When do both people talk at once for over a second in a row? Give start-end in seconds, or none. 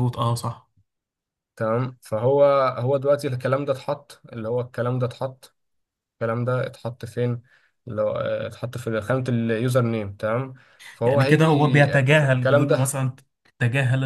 11.1-13.0